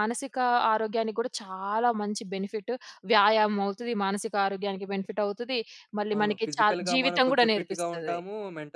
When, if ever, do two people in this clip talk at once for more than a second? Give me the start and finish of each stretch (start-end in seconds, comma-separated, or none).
6.2-8.2